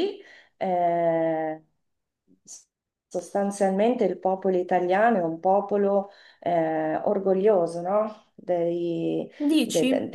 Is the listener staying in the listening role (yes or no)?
yes